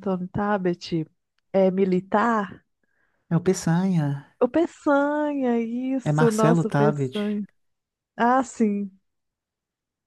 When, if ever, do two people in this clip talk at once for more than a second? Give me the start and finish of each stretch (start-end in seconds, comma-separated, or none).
6.0-7.2